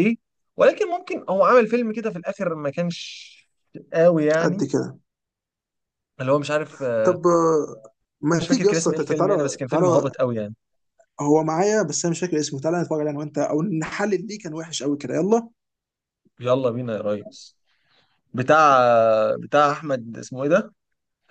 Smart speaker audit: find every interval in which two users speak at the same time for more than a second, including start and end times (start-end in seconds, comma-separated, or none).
8.4-10.1